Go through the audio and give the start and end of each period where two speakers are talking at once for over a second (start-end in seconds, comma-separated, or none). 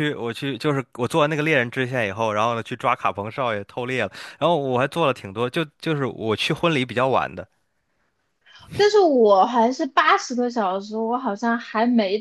none